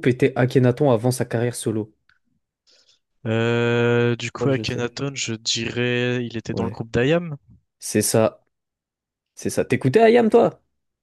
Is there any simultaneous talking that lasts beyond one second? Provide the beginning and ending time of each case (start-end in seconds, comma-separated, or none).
none